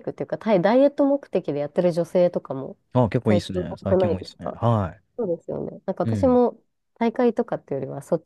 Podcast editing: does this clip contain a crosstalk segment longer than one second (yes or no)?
yes